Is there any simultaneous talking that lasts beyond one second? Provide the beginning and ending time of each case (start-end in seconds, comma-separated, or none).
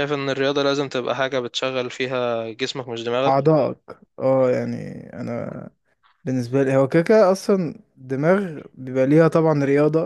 none